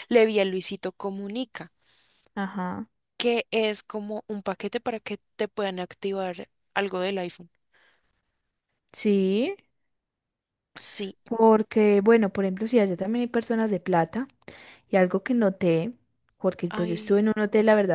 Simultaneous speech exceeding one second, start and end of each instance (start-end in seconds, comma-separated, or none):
none